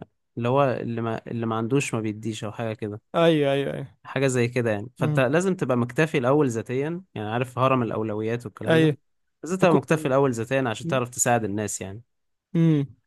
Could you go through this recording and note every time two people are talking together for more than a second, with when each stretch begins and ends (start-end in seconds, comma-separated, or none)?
none